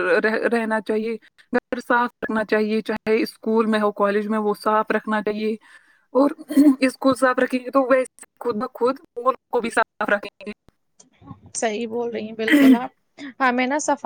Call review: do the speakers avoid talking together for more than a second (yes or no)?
yes